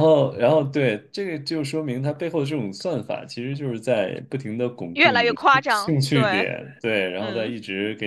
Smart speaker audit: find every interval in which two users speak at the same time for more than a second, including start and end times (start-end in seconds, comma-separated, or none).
4.9-6.5